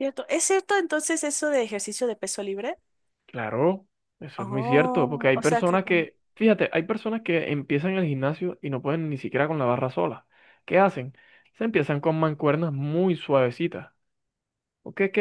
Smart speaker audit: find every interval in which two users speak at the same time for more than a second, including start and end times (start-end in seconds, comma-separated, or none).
4.4-6.1